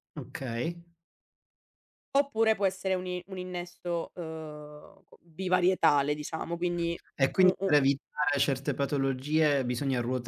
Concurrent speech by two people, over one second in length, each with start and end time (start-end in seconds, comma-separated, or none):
none